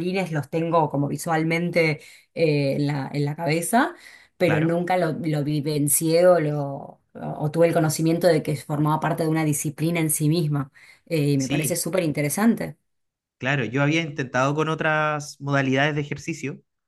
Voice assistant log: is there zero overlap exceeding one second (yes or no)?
yes